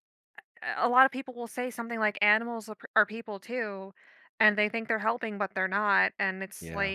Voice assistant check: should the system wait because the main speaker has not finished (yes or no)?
yes